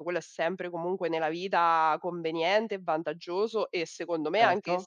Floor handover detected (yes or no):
no